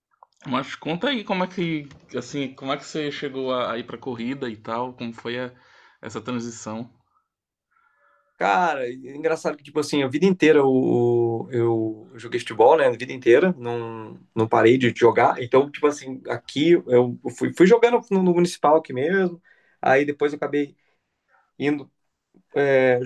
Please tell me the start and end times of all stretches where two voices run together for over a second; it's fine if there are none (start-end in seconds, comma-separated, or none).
none